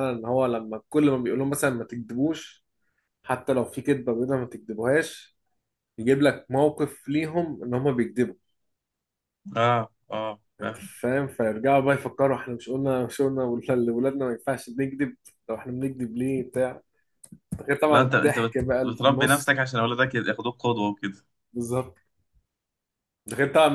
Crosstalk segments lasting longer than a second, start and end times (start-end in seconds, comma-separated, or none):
17.9-19.6